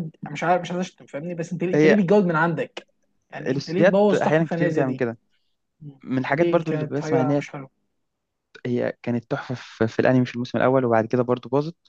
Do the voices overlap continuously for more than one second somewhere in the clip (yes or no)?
yes